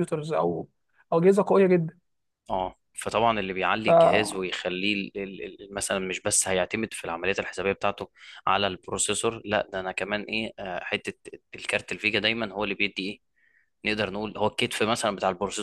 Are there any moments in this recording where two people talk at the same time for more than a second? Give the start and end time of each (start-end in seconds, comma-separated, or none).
none